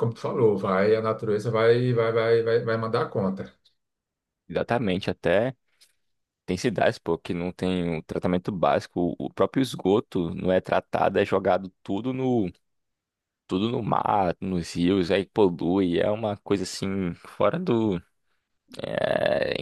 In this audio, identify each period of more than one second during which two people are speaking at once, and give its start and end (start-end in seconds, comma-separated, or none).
none